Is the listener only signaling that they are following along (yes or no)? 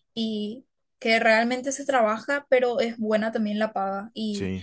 yes